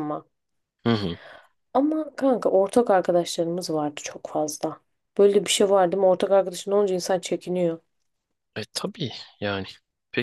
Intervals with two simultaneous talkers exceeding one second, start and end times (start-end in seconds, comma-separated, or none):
none